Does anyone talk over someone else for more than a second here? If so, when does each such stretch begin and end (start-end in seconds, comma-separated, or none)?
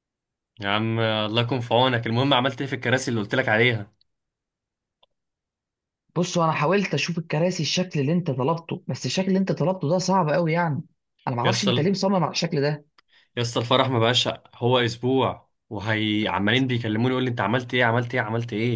none